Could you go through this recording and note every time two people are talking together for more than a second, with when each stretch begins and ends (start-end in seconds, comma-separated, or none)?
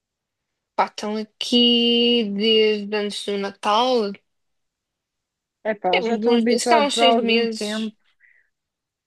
5.9-7.9